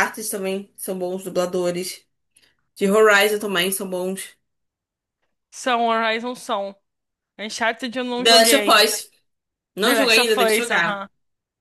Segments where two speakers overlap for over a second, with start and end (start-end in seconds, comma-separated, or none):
9.8-11.1